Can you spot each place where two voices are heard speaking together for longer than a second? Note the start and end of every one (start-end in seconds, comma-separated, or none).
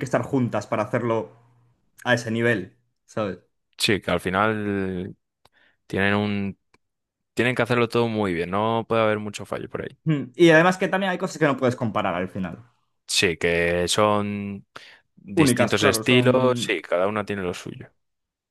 15.3-16.8